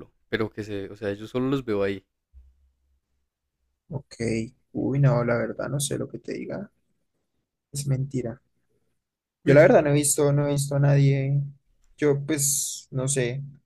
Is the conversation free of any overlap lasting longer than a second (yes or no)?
yes